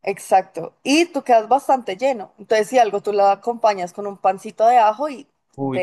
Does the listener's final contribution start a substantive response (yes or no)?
yes